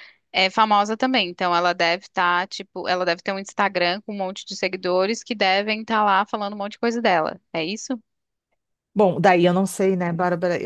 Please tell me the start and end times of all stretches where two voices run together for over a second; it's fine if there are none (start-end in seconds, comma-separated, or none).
none